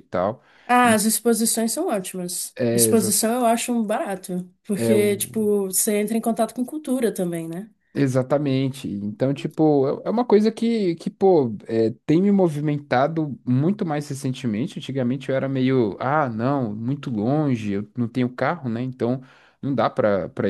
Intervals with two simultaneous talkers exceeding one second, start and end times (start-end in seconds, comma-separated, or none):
none